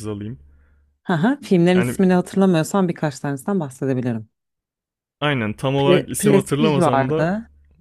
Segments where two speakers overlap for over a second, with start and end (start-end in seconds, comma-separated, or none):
5.8-7.3